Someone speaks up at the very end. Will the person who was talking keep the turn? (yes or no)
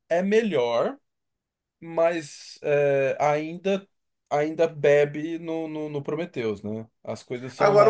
no